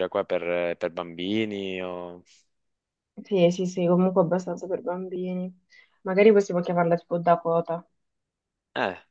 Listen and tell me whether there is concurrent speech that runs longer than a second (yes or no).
no